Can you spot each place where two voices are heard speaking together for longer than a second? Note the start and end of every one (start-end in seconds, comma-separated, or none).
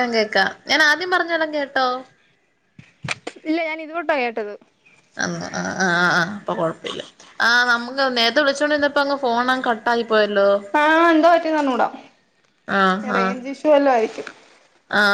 none